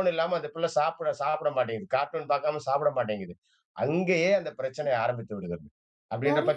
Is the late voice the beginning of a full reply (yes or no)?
yes